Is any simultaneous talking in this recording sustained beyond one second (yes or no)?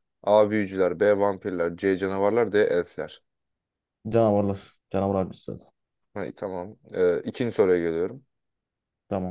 no